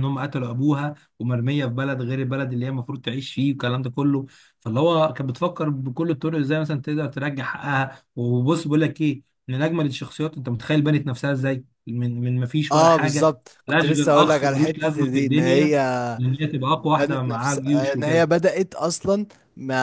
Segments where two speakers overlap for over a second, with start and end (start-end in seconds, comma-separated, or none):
12.7-15.7, 16.9-18.3